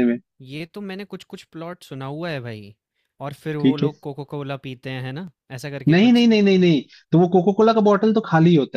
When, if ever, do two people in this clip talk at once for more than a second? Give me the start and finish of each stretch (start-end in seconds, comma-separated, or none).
none